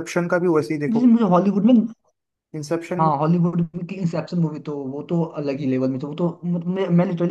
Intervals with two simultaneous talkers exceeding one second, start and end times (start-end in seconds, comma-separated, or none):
none